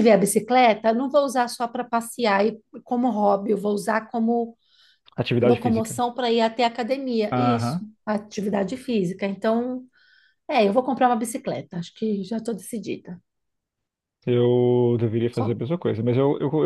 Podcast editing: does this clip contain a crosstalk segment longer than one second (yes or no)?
no